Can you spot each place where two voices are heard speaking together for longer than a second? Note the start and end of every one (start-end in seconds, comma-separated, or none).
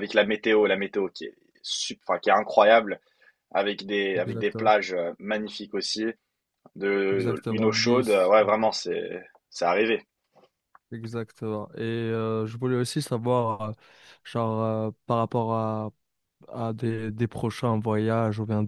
7.1-8.3